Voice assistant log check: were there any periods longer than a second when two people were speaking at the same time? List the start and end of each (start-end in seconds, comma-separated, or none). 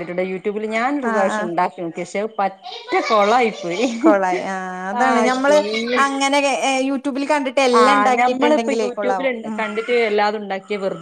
7.8-9.6